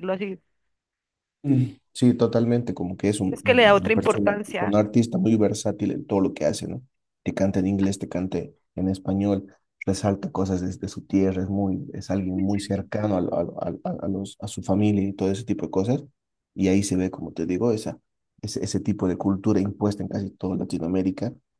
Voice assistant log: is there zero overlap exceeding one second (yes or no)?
no